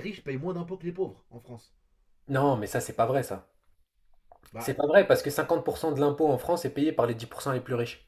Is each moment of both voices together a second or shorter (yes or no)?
yes